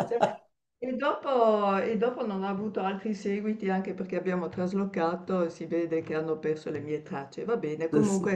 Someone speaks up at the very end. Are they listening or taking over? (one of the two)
listening